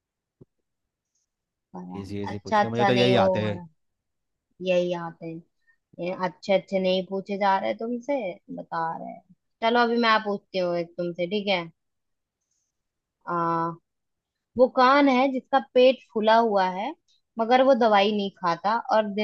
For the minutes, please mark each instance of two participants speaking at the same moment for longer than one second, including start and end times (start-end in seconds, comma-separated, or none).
2.0-3.6